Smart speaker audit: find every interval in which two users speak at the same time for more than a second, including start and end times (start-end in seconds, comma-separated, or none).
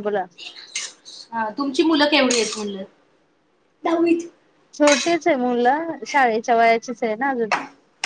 none